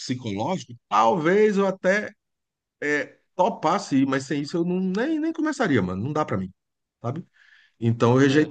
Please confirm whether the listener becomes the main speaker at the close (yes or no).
no